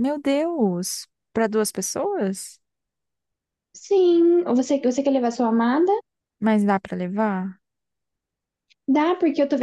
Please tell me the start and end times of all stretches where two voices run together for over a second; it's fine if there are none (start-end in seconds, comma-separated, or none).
none